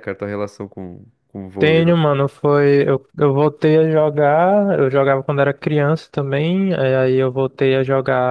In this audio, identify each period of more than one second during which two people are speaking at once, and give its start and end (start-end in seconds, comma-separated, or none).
none